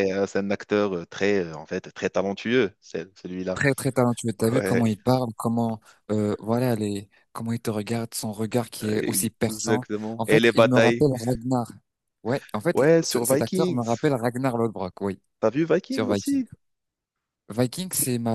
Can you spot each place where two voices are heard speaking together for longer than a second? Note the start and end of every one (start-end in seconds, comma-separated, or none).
9.5-11.1, 12.7-14.2